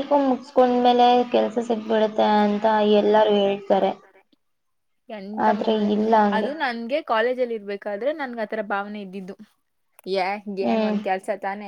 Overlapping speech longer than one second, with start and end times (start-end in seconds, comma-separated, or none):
none